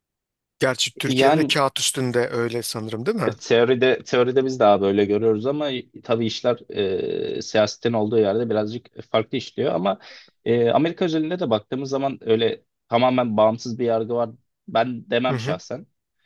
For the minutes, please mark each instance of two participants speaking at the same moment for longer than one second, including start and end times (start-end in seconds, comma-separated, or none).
none